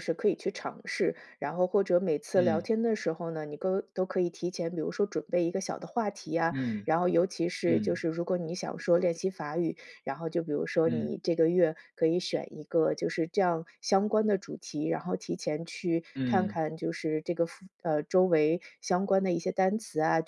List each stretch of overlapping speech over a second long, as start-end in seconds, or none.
none